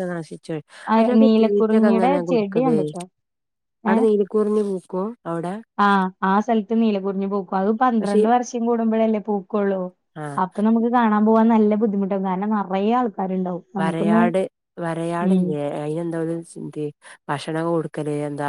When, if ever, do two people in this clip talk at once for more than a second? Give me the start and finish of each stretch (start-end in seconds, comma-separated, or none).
1.0-2.8